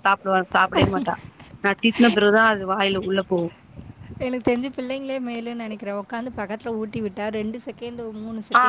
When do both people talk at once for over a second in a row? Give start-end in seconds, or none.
none